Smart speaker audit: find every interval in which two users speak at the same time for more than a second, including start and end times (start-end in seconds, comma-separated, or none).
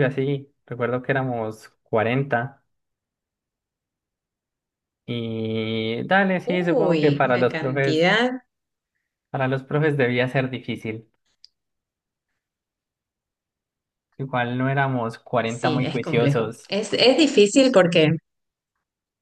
6.5-8.1, 15.4-16.7